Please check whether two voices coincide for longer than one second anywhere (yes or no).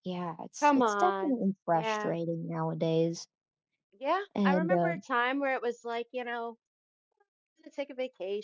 yes